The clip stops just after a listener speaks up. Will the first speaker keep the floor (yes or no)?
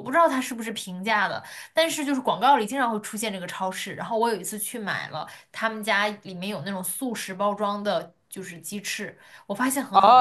no